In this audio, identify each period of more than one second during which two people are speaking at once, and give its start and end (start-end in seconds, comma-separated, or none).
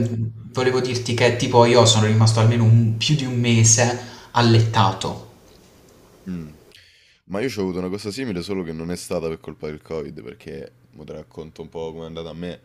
none